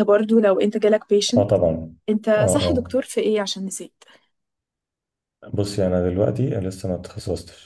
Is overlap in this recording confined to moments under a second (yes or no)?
yes